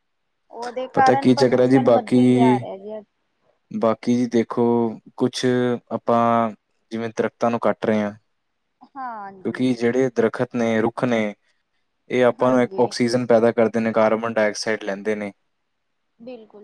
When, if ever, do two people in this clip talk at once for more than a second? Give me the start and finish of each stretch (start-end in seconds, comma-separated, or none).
0.9-2.7